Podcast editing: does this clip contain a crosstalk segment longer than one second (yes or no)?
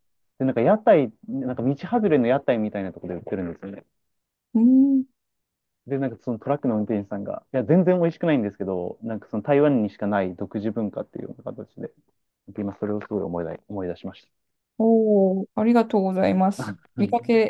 no